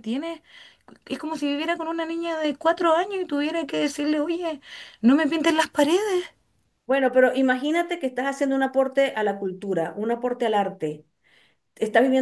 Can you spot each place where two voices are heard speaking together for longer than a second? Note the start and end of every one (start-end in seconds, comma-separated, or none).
none